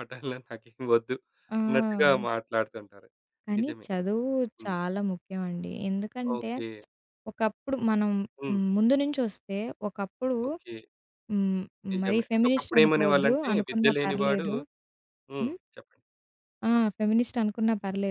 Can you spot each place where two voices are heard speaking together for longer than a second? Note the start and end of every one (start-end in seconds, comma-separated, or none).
12.0-14.5